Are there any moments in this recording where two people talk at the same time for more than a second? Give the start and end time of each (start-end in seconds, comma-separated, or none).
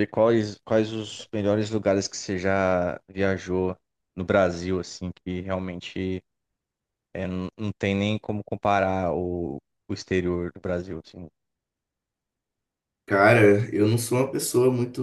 none